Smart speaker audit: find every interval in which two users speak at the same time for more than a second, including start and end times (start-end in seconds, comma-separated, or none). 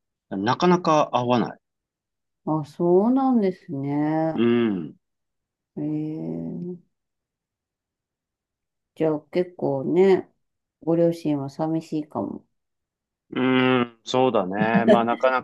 none